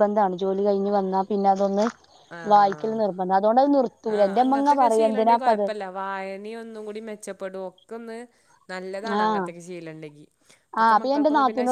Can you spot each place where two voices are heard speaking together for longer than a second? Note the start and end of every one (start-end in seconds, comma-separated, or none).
none